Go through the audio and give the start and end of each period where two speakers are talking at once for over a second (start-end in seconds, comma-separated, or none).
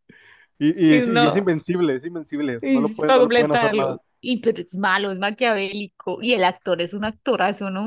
2.6-4.0